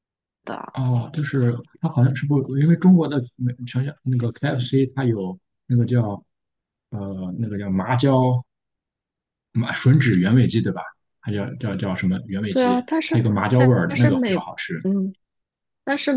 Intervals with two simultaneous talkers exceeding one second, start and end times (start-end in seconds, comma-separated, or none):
12.5-14.5